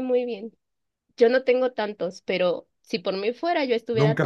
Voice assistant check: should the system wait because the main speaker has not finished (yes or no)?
no